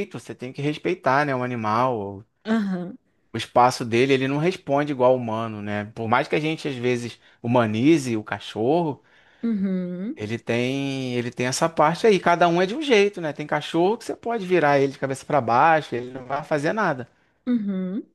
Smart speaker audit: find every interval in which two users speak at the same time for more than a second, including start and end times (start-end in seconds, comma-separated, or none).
none